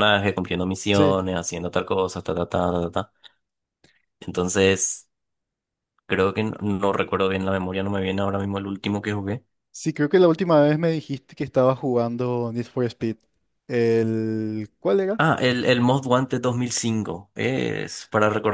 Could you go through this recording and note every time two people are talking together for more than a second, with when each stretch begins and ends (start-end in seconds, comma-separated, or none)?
none